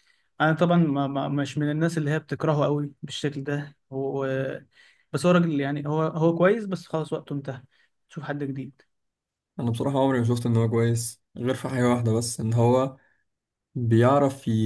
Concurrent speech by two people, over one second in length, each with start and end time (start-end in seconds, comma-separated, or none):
none